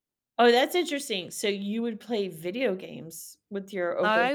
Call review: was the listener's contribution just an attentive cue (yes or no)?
no